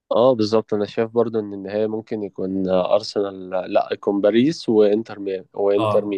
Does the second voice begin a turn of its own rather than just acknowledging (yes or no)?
yes